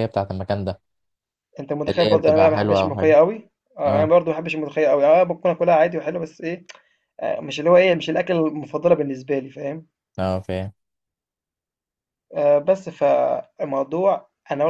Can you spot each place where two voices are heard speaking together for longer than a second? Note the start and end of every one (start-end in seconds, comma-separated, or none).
1.9-3.1